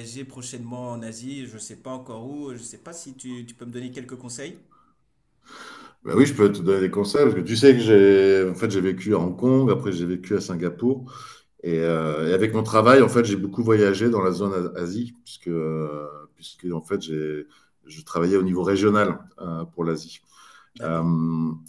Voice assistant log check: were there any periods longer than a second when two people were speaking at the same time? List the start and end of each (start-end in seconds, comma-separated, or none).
none